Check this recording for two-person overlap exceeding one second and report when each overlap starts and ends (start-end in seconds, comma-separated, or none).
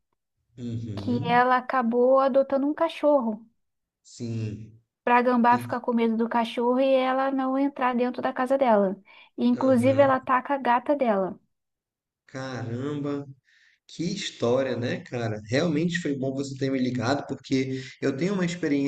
none